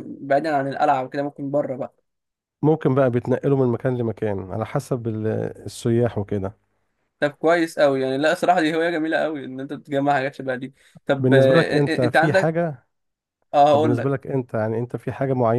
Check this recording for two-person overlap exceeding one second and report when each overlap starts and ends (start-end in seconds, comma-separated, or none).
11.2-12.6